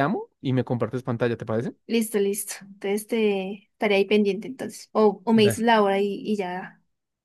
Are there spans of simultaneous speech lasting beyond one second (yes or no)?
no